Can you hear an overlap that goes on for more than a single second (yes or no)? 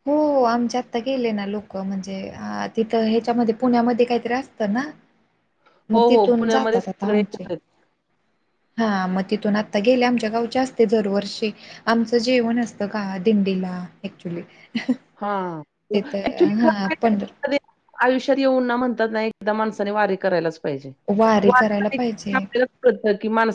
yes